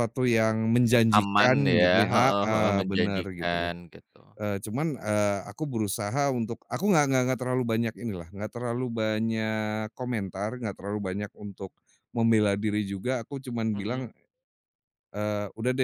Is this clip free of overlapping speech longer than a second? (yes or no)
no